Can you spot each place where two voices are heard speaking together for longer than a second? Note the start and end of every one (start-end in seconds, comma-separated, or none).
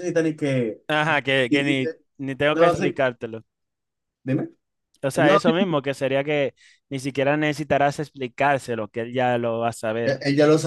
none